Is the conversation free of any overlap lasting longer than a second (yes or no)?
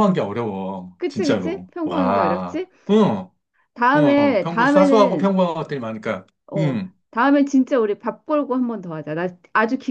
no